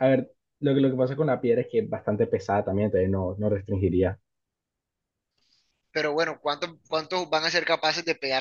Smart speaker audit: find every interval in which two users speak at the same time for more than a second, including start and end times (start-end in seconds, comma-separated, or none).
none